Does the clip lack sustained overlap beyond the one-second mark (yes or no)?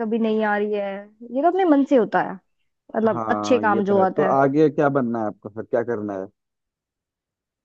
no